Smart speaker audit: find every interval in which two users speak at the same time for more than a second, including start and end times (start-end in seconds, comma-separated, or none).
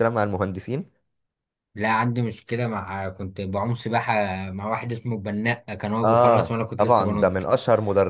6.0-7.5